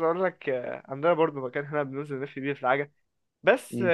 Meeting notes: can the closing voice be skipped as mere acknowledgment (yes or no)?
yes